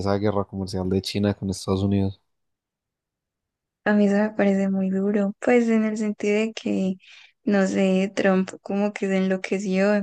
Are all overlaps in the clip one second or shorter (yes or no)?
yes